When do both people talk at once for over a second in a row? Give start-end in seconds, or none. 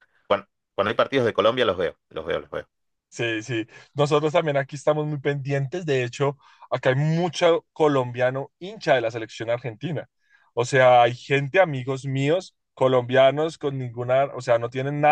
none